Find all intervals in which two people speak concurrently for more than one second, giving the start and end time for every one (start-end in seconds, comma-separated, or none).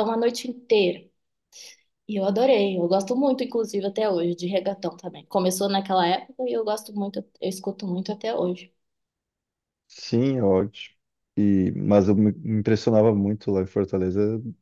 none